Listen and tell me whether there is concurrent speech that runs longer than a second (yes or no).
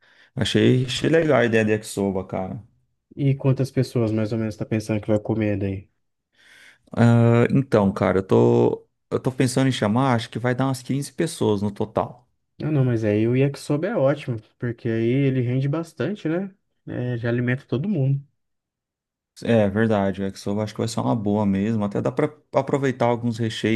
no